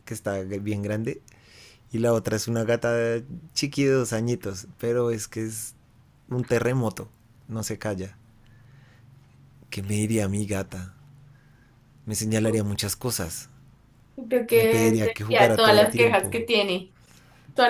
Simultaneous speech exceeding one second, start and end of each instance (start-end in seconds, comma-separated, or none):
14.5-16.4